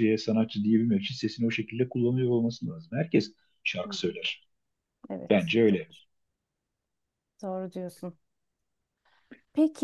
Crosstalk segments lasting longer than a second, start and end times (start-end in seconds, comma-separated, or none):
none